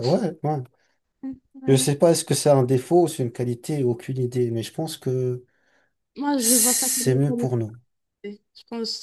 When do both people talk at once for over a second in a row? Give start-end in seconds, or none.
6.3-7.8